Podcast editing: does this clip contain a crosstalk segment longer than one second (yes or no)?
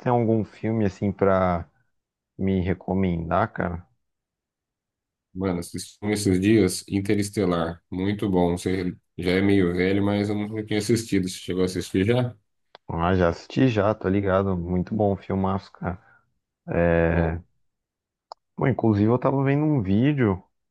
no